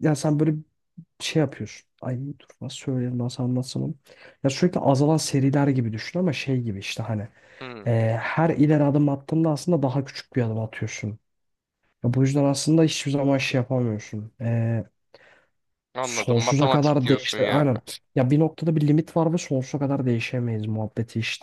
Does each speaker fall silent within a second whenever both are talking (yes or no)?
no